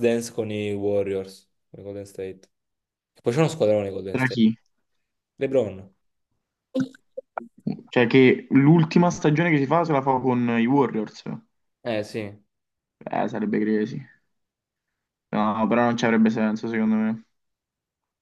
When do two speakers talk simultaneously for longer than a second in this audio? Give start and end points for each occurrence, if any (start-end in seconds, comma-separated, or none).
none